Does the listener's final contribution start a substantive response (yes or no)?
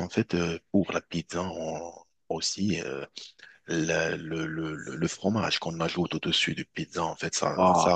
no